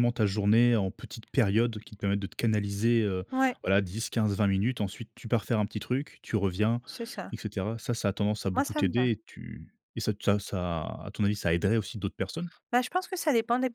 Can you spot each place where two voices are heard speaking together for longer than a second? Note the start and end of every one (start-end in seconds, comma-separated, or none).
none